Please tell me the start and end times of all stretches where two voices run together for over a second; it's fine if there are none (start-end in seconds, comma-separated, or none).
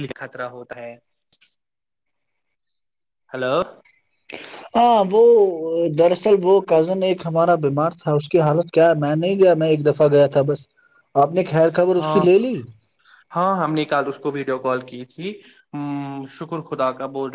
none